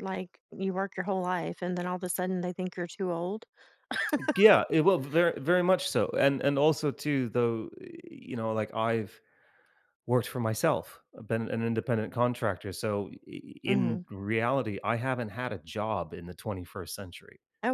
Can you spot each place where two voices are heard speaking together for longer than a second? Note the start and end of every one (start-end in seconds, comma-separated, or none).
none